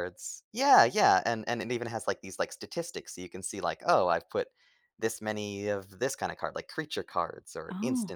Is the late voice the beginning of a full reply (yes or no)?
no